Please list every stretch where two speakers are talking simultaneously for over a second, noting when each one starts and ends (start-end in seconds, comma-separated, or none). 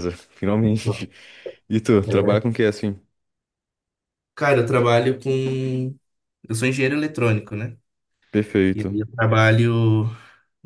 none